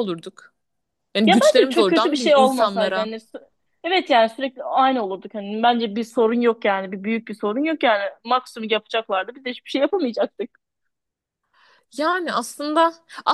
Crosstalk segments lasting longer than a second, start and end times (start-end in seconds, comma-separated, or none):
1.3-3.1